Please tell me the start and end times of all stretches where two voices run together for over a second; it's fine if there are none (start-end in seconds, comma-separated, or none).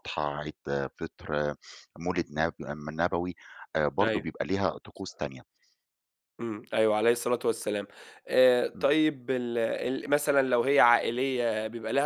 none